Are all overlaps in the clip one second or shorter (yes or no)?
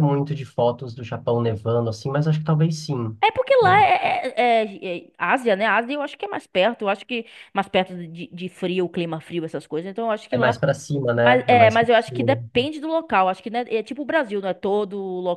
no